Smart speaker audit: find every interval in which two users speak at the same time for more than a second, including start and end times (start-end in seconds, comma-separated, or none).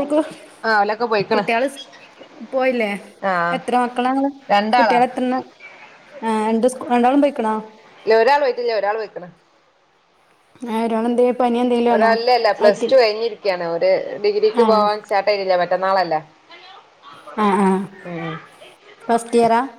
none